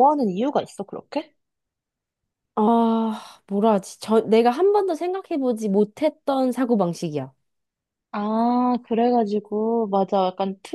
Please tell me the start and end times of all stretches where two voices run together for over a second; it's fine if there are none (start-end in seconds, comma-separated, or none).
none